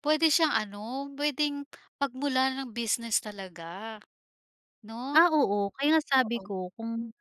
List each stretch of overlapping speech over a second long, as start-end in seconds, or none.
none